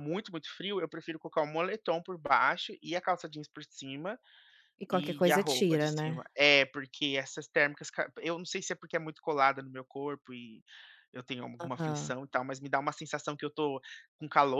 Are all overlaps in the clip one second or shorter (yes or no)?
no